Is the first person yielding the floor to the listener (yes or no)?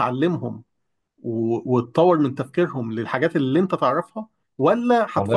no